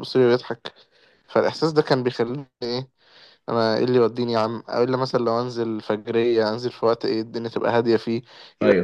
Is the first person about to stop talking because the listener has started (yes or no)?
no